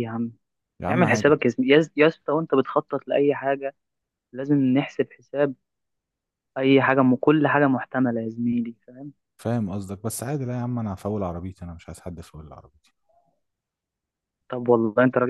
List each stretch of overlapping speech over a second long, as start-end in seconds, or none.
none